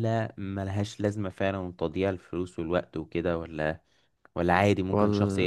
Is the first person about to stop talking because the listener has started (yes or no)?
yes